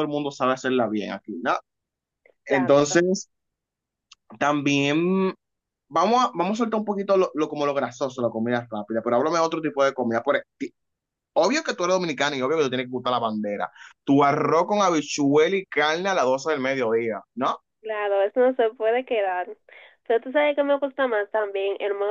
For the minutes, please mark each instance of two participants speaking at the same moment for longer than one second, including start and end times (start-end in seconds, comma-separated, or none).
none